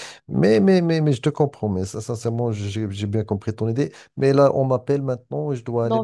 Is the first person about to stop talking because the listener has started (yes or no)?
yes